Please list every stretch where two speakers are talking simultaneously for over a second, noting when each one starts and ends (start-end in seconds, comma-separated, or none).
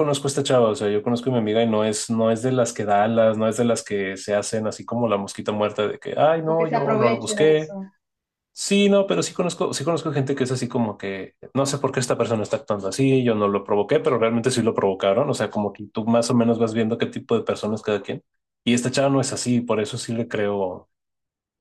6.4-7.8